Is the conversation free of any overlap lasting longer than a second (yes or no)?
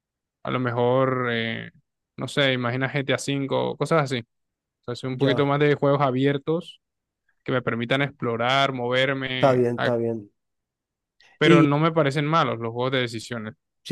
yes